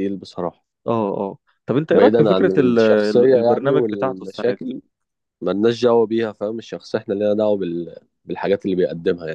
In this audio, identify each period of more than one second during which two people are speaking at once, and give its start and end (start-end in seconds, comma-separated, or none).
1.9-4.6